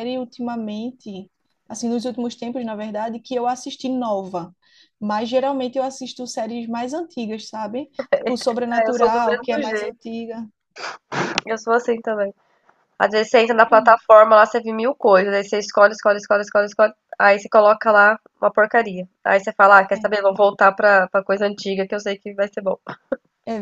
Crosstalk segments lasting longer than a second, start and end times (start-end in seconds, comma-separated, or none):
8.7-10.0